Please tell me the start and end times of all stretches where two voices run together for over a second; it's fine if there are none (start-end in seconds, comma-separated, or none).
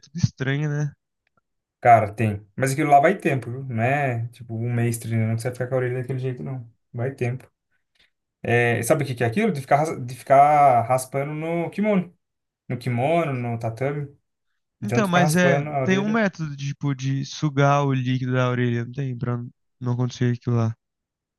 14.8-16.2